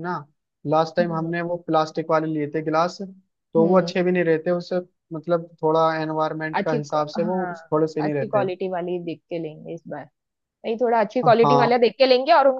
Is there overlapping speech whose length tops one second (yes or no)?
yes